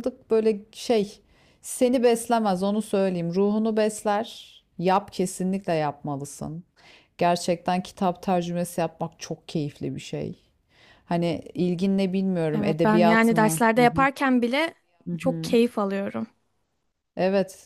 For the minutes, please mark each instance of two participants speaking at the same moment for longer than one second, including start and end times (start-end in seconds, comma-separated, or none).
12.5-14.1